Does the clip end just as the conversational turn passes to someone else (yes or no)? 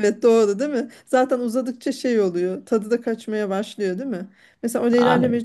no